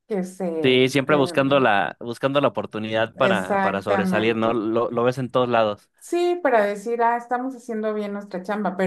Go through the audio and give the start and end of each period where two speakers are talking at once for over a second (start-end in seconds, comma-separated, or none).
3.3-4.6